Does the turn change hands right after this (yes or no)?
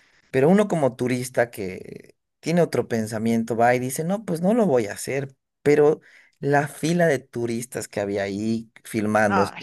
no